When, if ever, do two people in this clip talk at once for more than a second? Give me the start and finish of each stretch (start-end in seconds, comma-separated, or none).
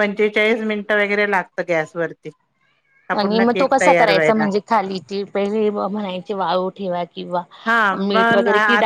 none